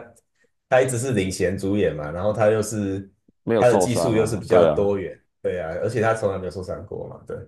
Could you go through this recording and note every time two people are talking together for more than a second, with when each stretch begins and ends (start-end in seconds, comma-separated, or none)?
3.5-5.0